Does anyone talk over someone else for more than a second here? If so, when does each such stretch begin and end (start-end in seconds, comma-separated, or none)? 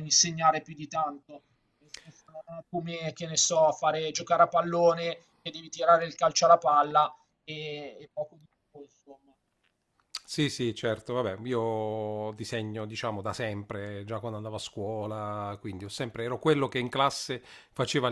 none